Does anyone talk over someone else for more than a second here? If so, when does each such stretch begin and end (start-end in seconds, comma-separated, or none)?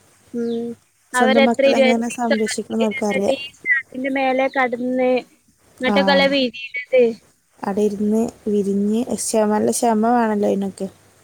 1.2-3.4